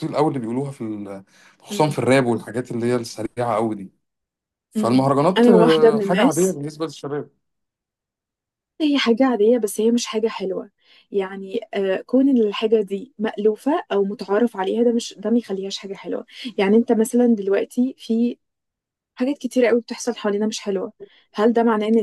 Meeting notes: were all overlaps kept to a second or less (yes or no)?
no